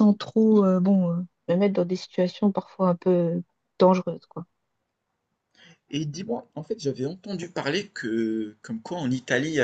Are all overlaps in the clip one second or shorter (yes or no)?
yes